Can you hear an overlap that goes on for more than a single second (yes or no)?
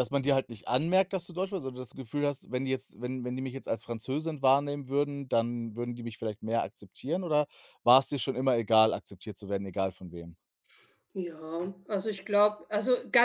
no